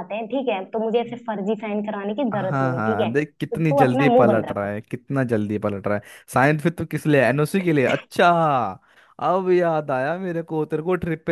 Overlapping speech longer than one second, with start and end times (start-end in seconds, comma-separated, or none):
2.3-4.7